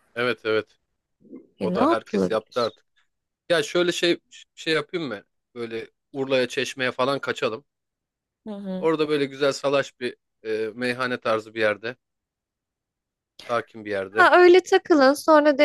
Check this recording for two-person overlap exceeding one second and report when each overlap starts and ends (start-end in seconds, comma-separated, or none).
1.6-2.8